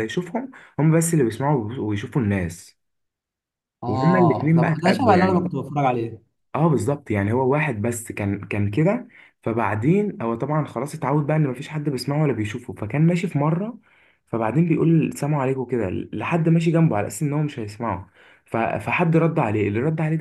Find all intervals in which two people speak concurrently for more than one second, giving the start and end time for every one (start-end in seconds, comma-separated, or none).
3.9-5.5